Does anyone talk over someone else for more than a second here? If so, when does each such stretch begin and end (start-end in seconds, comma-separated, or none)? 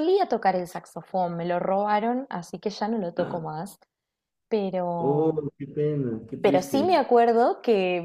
none